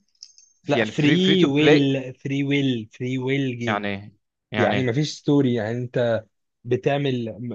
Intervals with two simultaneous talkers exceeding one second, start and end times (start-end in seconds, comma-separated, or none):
0.7-2.0